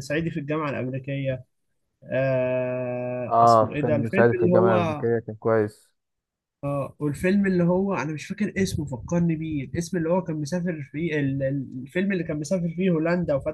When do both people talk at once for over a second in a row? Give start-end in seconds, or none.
3.3-5.1